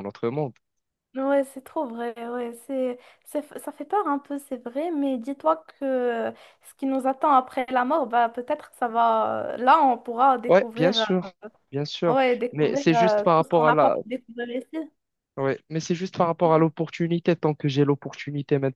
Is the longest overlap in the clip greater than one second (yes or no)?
yes